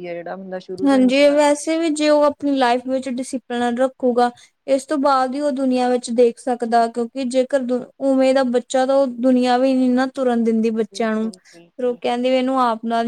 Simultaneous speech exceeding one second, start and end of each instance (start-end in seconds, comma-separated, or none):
0.8-2.2